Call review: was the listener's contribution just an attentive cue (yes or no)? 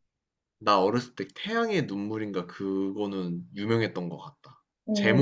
yes